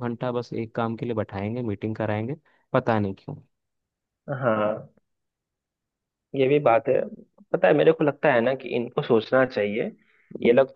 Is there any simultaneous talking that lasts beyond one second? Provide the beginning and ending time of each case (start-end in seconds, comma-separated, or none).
none